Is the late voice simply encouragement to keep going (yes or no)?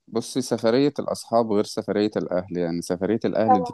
yes